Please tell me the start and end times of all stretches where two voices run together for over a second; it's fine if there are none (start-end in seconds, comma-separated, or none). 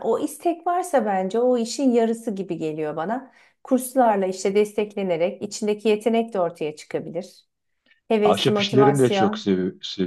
8.2-9.5